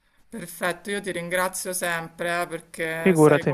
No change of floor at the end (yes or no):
yes